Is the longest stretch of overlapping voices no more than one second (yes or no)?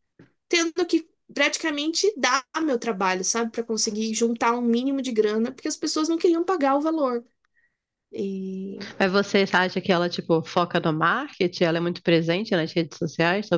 yes